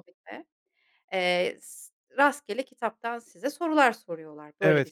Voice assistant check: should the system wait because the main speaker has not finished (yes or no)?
no